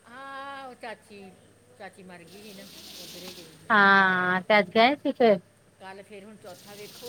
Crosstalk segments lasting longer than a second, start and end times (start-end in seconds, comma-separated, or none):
none